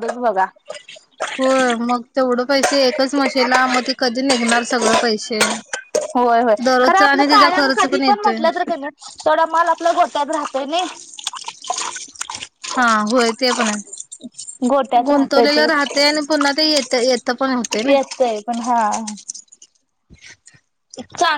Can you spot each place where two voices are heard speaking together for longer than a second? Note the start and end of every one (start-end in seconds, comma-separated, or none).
6.6-8.4